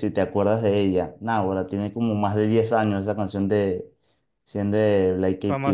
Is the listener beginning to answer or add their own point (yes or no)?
yes